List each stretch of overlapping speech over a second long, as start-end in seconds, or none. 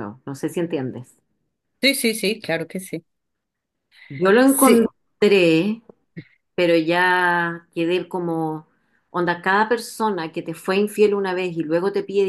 none